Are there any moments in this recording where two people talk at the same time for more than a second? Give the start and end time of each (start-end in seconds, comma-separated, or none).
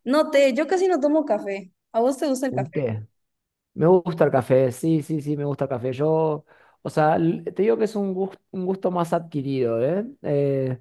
none